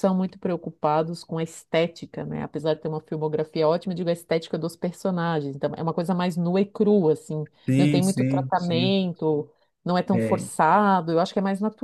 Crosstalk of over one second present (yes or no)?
yes